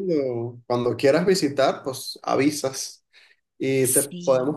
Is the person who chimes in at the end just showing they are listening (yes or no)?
yes